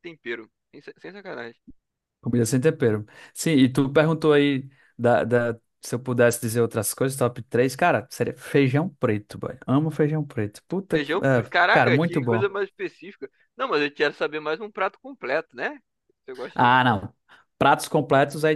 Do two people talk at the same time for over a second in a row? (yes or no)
yes